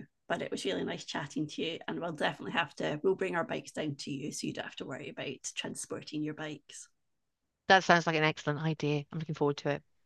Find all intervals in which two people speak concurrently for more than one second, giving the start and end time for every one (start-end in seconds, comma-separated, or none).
none